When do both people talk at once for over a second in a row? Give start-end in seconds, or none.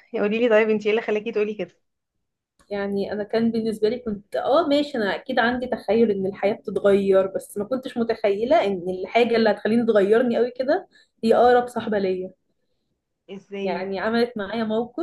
none